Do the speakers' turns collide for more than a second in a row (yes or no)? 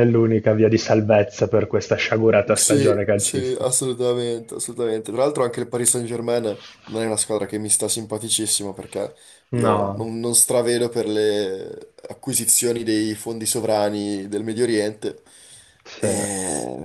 yes